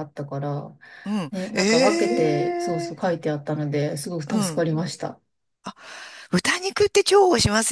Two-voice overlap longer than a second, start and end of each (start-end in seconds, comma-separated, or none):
1.3-3.1